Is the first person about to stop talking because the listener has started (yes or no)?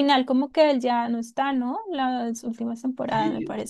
yes